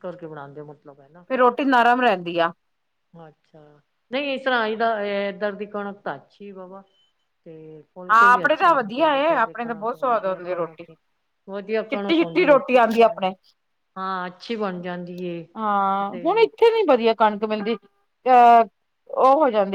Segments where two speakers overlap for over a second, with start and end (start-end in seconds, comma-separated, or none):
8.1-10.8, 11.9-13.2